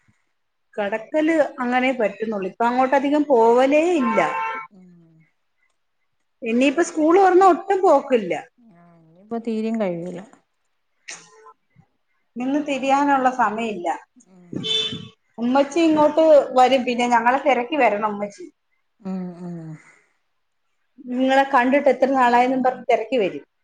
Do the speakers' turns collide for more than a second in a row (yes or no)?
no